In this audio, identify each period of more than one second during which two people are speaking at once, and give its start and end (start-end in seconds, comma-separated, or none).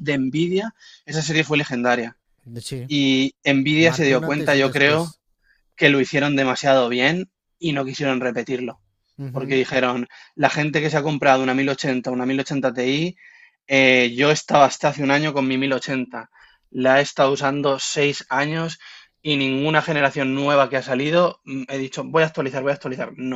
3.8-5.2